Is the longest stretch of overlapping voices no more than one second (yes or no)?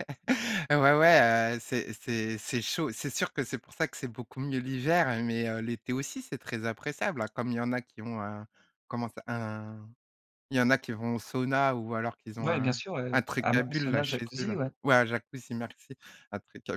no